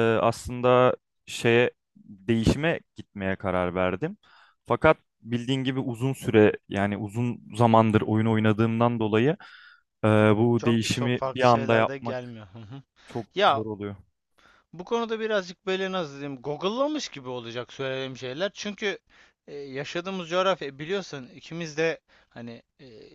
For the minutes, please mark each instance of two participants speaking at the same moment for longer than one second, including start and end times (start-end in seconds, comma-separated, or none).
10.6-12.4